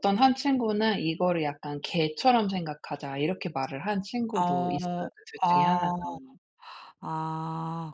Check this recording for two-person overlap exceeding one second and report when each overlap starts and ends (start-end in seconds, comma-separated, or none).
4.4-5.9